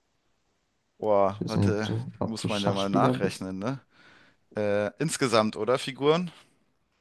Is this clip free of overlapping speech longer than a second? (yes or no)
no